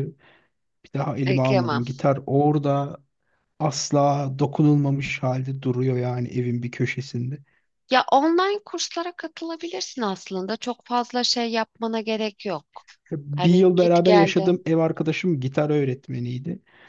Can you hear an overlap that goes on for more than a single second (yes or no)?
yes